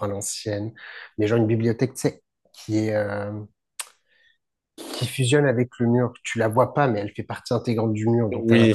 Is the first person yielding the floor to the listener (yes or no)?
no